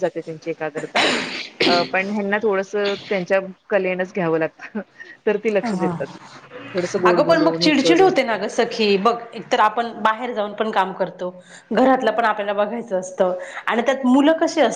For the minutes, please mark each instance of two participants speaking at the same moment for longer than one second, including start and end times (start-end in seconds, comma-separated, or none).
7.1-8.9